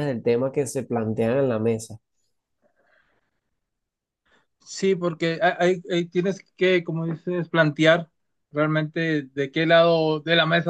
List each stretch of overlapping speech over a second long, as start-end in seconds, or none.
none